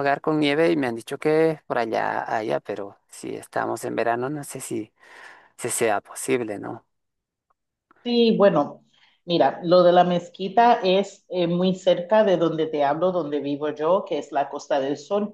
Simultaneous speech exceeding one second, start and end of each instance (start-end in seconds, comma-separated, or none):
none